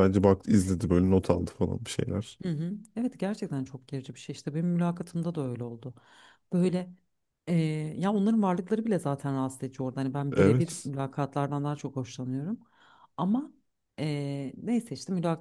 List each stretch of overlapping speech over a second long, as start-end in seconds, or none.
none